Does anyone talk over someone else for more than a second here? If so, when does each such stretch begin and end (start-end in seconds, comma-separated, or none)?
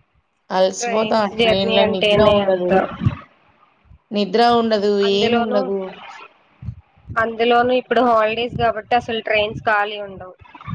0.8-2.7